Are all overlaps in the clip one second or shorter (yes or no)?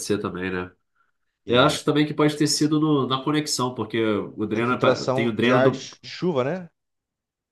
no